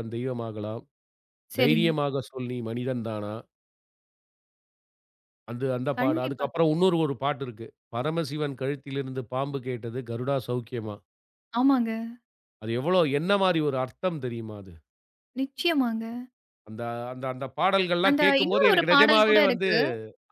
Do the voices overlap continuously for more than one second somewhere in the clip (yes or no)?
yes